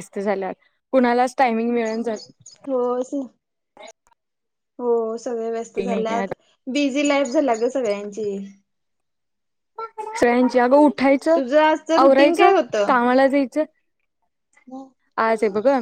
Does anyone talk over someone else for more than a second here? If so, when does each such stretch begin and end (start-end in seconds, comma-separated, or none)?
none